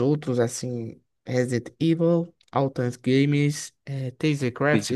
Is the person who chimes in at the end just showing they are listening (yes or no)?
yes